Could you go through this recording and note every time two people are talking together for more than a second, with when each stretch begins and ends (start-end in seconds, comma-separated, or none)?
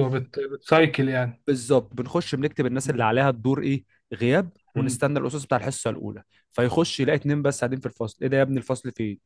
none